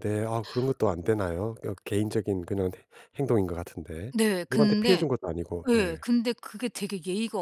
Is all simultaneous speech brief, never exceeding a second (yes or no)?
yes